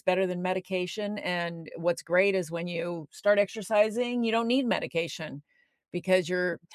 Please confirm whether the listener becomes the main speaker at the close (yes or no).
no